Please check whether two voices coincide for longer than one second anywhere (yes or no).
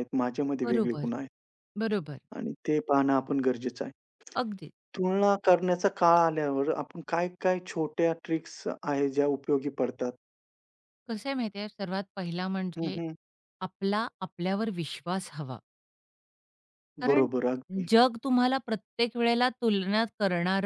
no